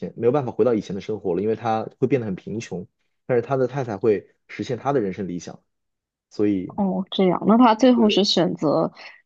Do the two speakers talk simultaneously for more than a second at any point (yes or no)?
no